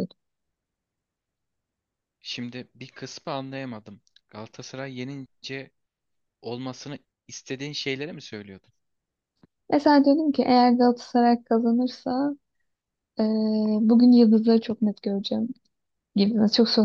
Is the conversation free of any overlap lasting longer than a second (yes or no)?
yes